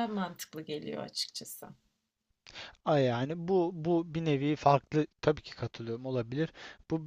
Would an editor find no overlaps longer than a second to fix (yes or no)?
yes